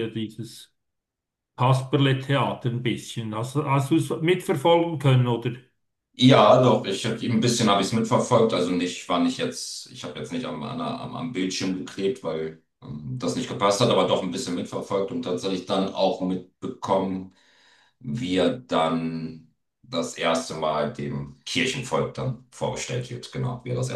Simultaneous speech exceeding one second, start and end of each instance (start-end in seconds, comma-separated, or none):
none